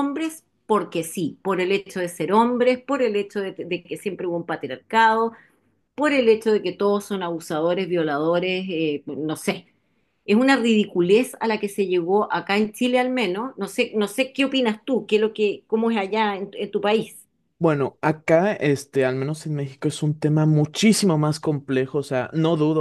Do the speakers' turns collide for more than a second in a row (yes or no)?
no